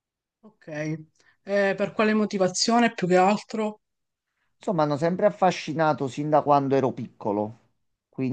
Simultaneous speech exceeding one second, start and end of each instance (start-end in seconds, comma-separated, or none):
none